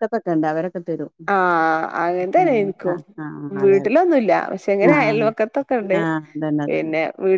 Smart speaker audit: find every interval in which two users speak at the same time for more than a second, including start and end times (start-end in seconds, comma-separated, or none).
none